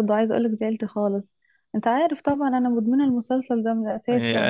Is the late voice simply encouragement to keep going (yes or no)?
no